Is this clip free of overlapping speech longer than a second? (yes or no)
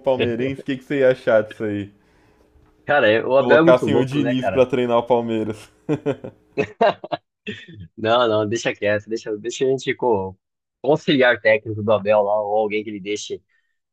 no